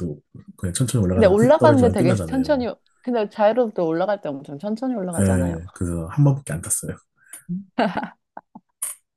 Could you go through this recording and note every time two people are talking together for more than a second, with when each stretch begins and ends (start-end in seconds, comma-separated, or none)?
1.1-2.6